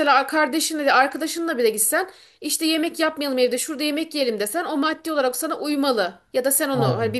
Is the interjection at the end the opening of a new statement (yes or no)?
no